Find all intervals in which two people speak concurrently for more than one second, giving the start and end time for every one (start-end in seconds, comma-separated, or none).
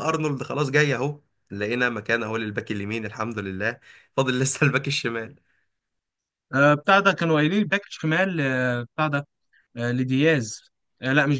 none